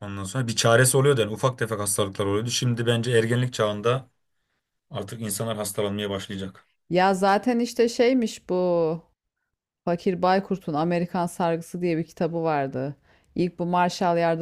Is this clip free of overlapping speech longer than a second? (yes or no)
yes